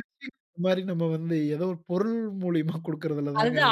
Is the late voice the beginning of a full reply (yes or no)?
yes